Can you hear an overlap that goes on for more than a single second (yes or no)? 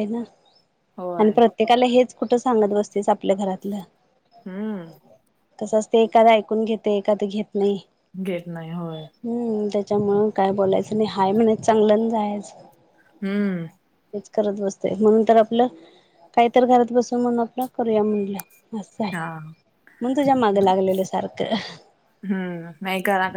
no